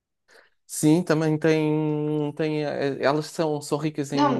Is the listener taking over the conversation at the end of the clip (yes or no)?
yes